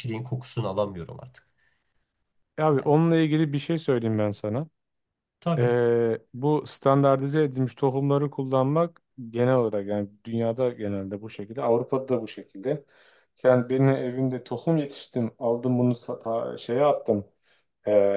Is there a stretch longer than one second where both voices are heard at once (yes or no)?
no